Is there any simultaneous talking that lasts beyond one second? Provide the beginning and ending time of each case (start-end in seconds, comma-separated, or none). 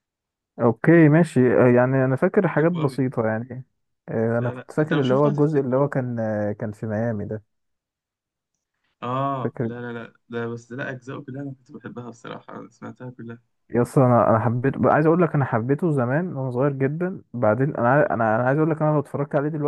4.4-5.8